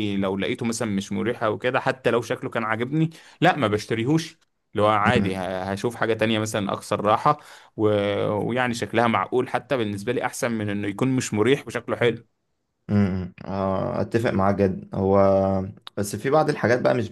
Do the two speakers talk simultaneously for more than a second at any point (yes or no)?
no